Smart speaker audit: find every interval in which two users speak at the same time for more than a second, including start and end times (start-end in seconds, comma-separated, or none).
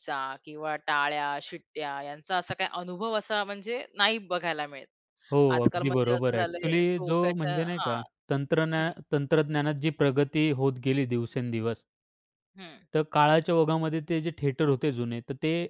5.5-8.0